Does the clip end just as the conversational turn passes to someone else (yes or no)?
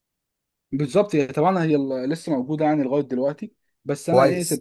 no